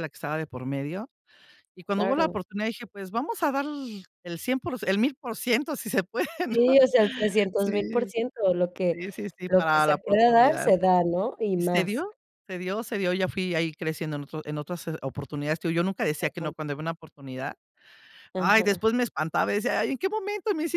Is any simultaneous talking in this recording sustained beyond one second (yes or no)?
yes